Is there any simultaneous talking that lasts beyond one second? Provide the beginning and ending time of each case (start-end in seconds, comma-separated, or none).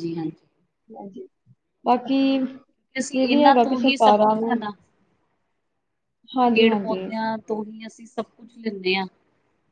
3.0-4.6